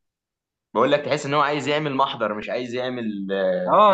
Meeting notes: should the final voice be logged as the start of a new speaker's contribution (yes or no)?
yes